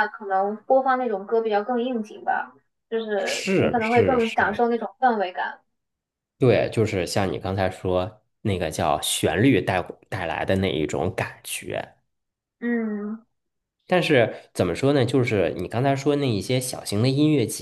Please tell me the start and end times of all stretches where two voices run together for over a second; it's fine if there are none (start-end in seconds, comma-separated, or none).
3.1-4.6